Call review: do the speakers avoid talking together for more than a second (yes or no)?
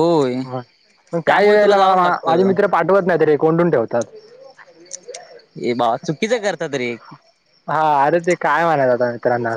no